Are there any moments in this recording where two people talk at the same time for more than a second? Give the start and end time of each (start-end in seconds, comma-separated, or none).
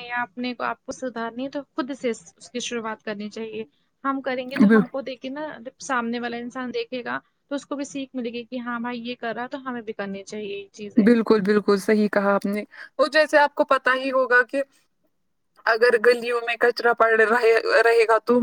none